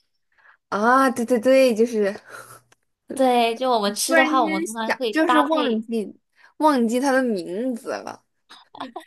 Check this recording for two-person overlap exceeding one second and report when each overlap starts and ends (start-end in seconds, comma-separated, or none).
4.0-5.8